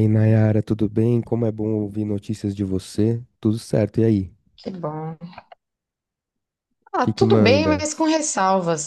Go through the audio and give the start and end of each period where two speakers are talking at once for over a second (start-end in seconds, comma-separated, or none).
7.0-8.2